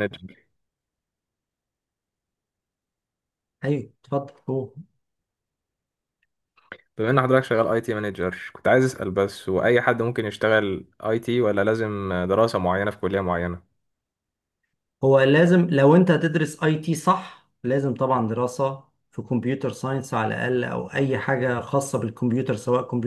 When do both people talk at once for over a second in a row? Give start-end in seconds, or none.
none